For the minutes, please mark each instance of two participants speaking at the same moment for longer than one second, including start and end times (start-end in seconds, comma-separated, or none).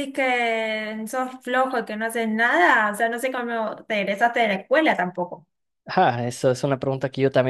none